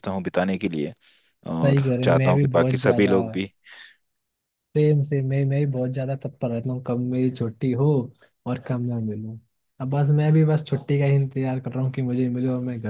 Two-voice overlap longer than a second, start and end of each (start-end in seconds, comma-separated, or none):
1.6-3.2